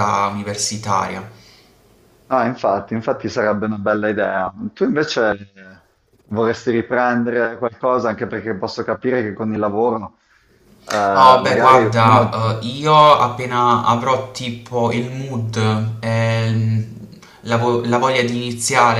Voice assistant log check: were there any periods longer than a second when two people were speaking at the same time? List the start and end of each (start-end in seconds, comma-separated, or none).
11.1-12.4